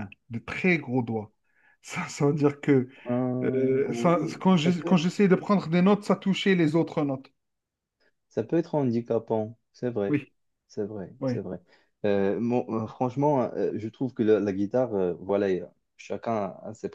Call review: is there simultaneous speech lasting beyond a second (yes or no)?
yes